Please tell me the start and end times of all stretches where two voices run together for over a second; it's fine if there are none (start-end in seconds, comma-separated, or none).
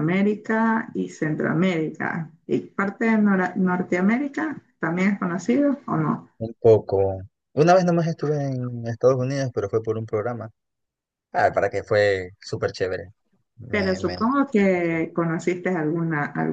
13.7-15.0